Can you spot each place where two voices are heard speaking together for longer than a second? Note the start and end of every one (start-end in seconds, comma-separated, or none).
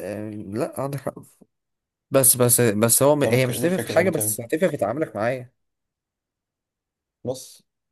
3.2-4.5